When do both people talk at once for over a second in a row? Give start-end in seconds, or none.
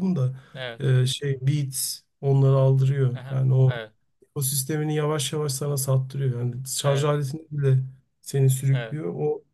none